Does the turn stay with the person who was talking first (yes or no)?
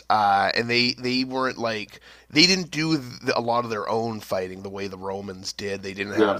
yes